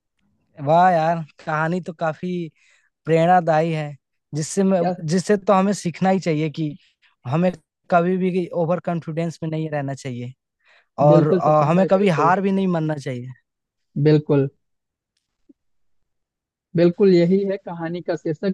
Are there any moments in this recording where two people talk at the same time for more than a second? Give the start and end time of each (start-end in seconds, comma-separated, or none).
11.1-12.3